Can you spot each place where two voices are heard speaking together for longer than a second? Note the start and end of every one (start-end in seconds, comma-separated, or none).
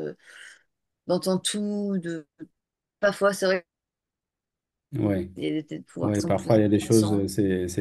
6.0-7.2